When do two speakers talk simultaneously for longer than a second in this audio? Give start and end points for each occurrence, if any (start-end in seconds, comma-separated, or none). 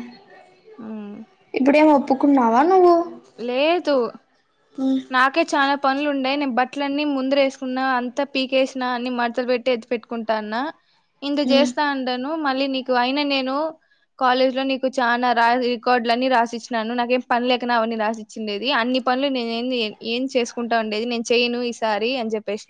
none